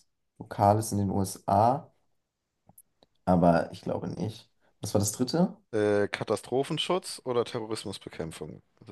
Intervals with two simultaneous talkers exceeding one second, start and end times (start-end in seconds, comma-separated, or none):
none